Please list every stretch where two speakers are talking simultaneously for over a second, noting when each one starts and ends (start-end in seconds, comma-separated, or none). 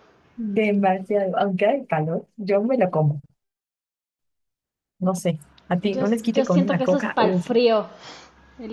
5.8-7.5